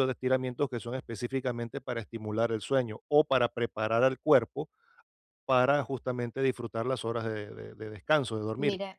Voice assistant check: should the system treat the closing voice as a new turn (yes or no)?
yes